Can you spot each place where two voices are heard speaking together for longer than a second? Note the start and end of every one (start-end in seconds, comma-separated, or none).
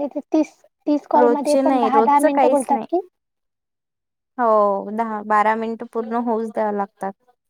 1.2-2.9